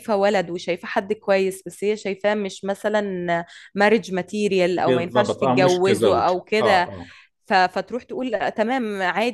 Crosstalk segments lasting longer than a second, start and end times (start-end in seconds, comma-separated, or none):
4.8-6.9